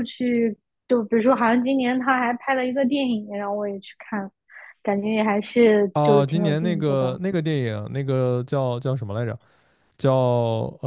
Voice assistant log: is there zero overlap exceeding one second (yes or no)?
no